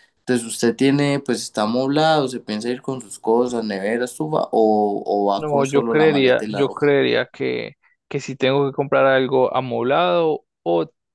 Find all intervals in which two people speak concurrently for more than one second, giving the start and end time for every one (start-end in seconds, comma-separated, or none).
5.3-6.9